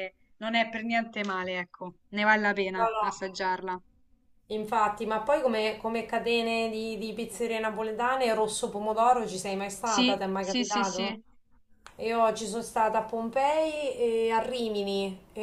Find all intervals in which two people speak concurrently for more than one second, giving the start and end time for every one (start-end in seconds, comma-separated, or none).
9.8-11.1